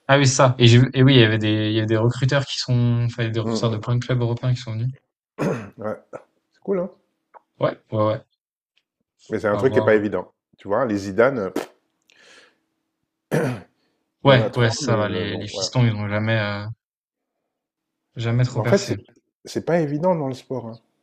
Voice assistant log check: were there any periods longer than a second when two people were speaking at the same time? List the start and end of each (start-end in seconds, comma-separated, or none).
14.2-15.7